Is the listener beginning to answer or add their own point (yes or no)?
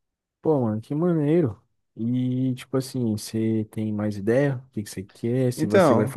no